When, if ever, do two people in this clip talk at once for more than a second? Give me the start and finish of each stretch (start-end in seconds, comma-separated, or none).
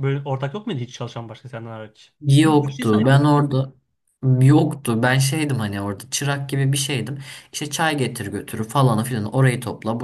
2.2-3.5